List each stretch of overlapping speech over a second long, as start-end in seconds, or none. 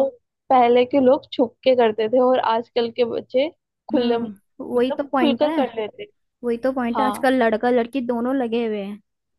3.9-5.6